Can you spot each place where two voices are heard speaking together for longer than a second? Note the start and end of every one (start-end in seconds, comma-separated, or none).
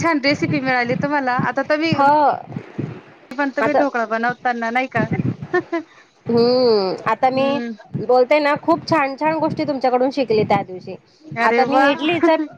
none